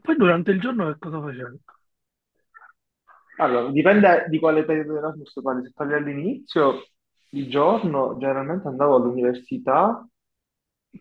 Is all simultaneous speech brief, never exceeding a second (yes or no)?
yes